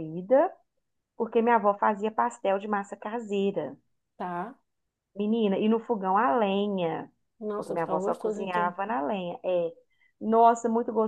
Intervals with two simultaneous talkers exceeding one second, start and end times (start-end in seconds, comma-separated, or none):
7.5-8.8